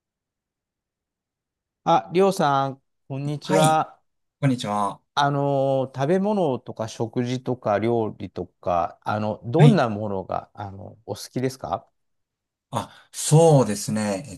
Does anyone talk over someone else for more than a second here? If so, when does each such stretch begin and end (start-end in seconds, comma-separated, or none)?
none